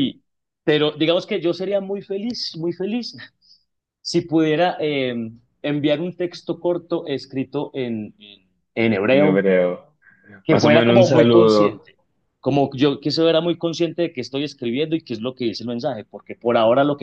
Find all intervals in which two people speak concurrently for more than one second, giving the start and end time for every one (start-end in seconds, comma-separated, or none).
10.5-11.9